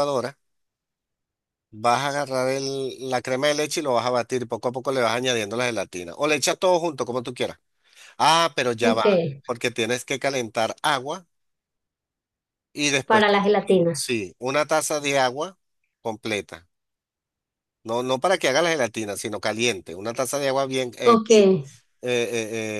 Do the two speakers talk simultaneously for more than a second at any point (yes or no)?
no